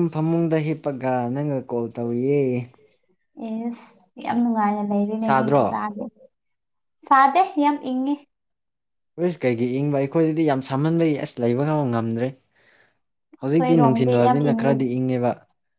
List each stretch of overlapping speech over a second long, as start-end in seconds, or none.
13.5-14.9